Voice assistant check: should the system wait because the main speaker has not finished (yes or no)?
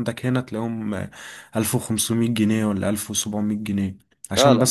yes